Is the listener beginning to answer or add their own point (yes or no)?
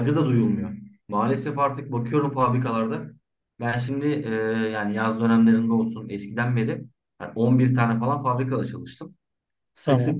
no